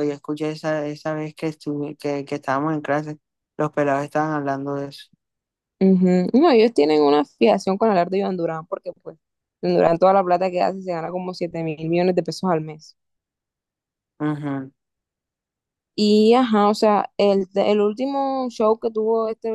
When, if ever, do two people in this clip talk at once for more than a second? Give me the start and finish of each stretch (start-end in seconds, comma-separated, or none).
none